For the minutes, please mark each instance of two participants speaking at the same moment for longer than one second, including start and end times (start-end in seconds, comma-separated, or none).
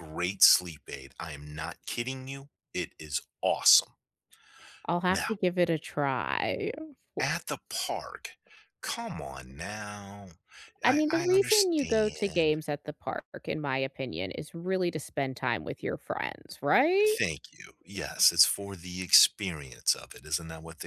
10.8-12.6